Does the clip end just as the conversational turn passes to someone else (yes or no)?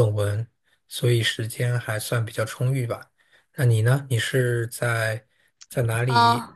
no